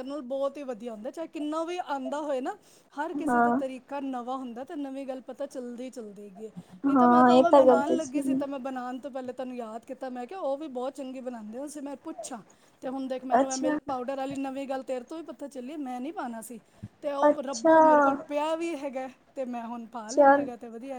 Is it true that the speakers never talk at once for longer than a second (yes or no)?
no